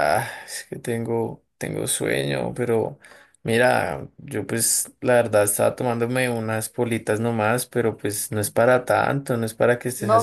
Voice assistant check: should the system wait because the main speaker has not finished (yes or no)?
no